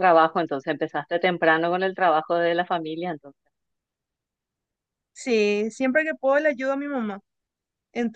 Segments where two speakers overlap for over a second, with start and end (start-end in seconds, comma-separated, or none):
none